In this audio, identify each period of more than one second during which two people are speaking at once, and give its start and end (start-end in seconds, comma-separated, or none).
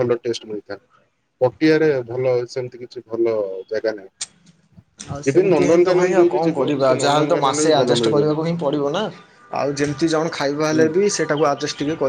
5.3-8.4